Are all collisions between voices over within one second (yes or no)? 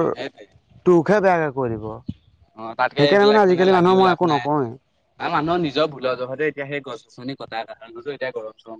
no